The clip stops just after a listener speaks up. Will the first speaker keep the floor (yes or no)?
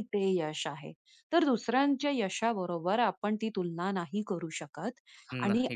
yes